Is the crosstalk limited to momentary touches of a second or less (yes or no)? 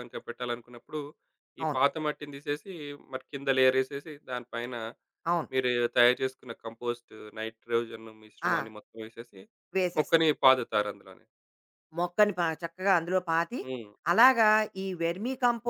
yes